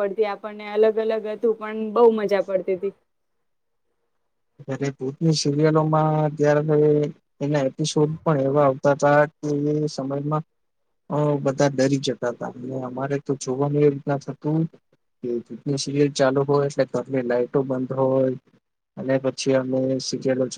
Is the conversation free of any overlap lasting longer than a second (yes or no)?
yes